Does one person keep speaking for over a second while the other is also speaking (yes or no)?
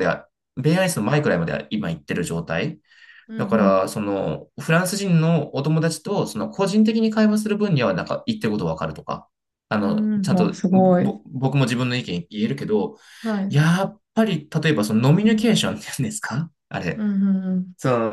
yes